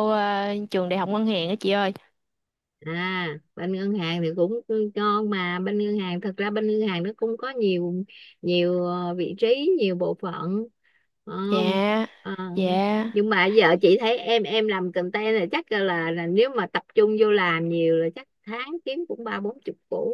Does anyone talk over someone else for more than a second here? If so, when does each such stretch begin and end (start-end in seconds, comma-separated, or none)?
none